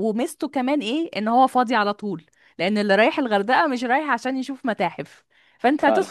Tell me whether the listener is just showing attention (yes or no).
yes